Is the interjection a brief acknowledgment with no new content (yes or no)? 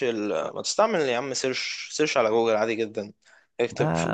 yes